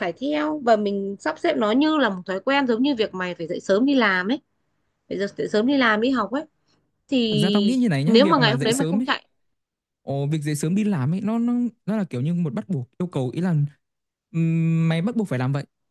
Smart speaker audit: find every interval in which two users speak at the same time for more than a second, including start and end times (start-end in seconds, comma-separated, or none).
7.3-9.1